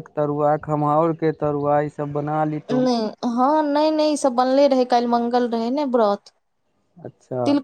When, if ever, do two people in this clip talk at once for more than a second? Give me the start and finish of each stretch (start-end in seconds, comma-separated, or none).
none